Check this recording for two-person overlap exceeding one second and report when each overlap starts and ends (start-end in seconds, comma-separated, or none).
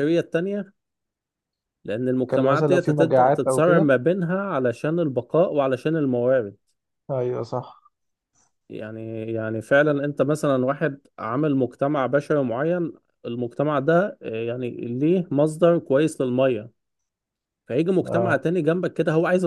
2.2-3.9